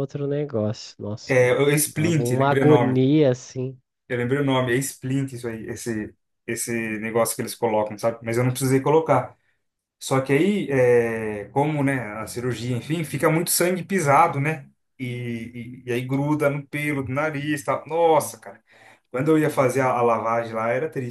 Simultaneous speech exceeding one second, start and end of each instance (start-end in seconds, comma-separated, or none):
1.2-3.0